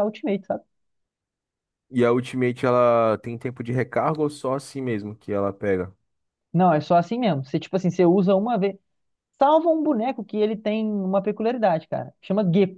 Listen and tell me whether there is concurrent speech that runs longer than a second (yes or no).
no